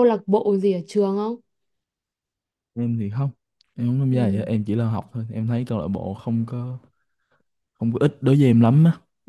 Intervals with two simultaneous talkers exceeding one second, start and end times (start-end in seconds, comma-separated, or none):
none